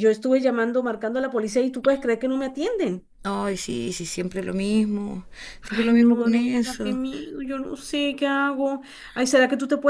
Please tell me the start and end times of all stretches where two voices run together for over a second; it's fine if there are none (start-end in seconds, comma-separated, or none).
5.8-7.0